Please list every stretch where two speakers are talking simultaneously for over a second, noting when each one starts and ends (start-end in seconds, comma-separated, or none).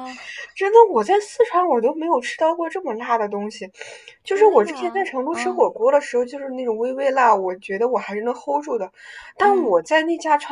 4.2-5.7